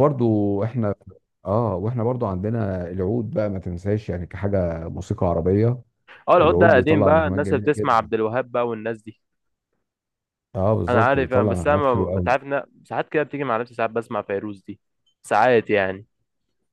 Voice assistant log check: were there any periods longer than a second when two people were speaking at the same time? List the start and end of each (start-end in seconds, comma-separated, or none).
6.4-8.1, 10.9-12.3